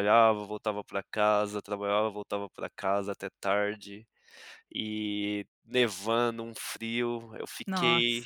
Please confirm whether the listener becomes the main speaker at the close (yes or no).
no